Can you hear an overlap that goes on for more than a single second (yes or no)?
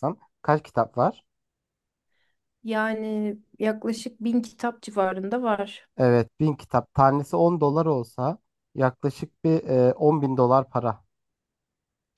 no